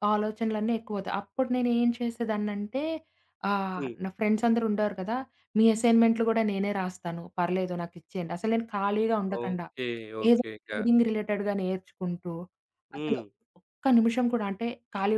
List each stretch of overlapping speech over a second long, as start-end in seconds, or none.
none